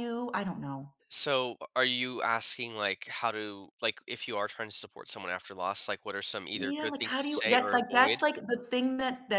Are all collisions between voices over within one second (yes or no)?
no